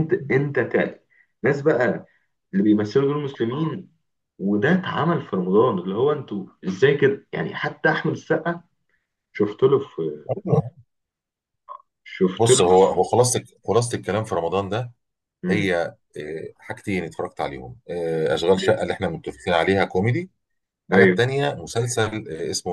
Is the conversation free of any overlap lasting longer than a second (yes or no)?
yes